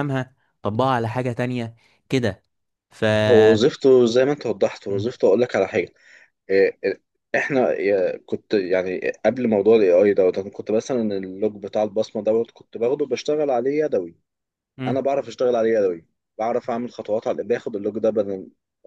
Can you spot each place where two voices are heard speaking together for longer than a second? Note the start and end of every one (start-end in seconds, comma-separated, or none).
none